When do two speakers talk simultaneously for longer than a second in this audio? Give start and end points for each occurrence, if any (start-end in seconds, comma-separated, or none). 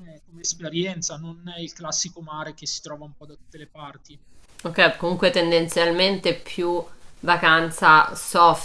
none